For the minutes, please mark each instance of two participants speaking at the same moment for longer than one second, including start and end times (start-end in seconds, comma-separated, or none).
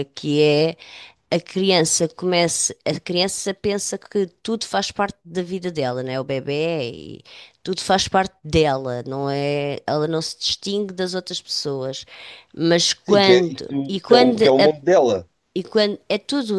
13.1-14.7